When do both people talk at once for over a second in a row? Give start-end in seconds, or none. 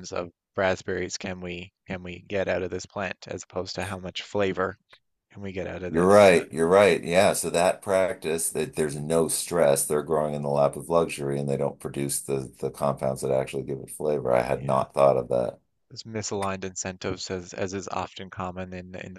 none